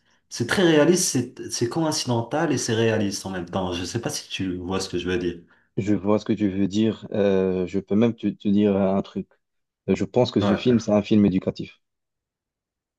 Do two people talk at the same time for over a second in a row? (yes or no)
no